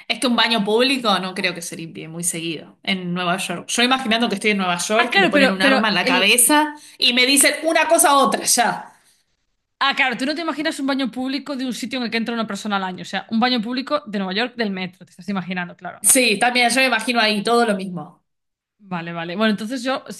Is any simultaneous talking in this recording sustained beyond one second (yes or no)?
yes